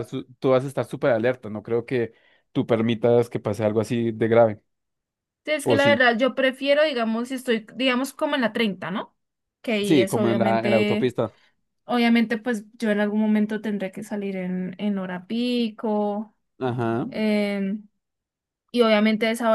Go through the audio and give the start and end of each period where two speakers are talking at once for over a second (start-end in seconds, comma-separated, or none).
9.8-11.1